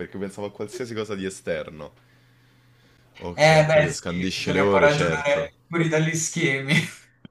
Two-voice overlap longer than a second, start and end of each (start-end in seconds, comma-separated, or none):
3.3-5.5